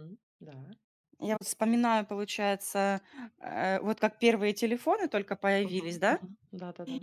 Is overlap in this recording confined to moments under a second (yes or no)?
yes